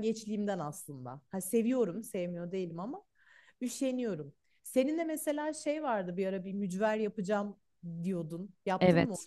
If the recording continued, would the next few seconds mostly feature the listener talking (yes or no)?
yes